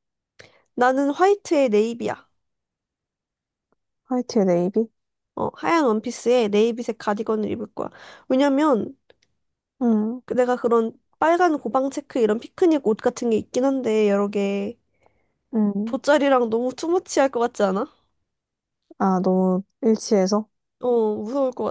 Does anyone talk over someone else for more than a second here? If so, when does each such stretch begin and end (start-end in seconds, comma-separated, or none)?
none